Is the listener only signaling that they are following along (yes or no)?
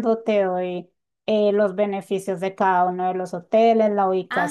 no